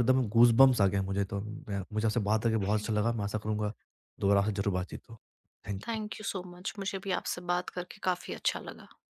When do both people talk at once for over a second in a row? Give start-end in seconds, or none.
none